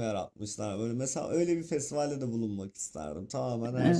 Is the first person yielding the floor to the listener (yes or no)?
yes